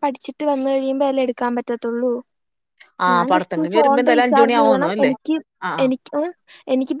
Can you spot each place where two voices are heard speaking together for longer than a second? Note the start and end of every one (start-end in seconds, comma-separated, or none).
3.1-5.1